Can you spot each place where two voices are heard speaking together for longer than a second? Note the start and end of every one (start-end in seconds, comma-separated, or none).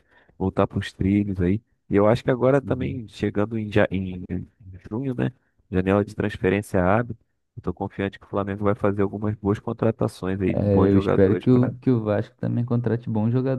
10.5-11.7